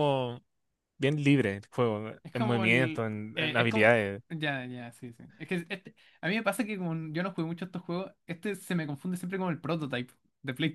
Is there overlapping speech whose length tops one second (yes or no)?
yes